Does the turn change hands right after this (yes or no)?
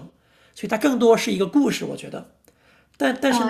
no